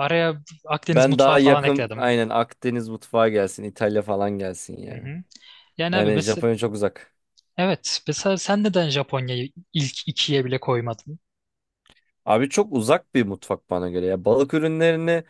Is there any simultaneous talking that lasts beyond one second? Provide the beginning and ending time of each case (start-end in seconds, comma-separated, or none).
0.9-2.1